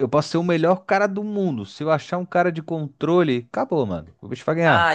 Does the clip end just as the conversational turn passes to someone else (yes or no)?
yes